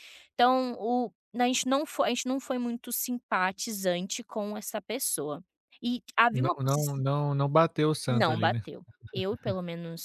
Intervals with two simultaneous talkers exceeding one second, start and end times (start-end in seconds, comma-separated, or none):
none